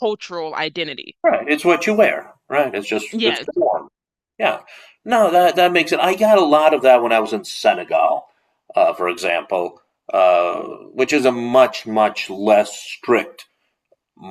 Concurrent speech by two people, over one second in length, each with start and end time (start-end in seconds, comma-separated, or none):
none